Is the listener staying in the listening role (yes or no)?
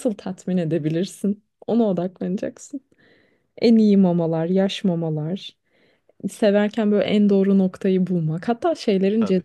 yes